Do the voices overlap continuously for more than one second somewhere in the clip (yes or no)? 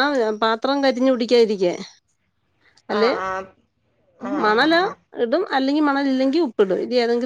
no